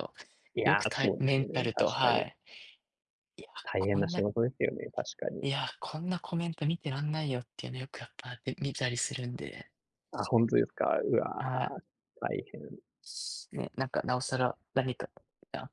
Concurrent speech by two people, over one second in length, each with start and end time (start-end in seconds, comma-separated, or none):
0.6-2.2